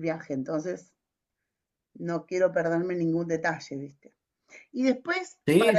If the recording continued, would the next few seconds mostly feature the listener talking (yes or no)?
no